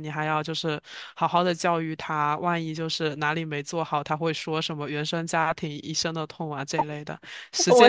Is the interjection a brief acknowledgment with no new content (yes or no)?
no